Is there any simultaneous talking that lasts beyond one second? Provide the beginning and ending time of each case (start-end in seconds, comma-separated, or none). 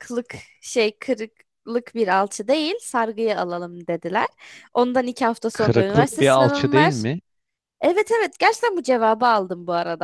5.5-7.0